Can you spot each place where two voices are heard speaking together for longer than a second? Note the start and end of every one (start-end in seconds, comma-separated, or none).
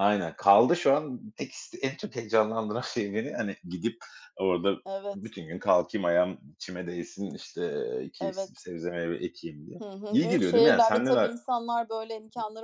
9.8-11.3